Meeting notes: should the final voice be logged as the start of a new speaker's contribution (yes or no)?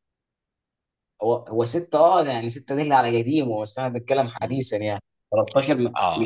yes